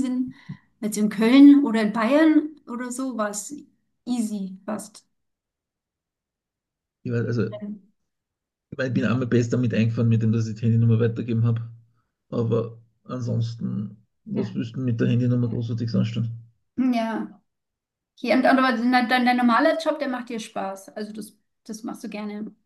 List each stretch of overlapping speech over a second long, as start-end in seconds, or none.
none